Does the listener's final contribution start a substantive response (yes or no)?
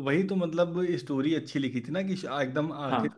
no